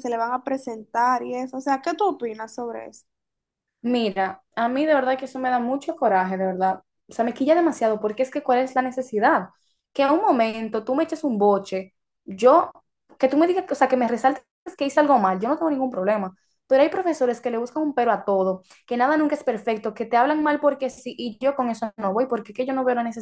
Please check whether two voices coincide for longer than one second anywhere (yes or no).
no